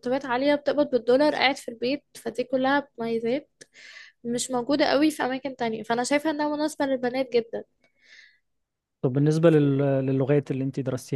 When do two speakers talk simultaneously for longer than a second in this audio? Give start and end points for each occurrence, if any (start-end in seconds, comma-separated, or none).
none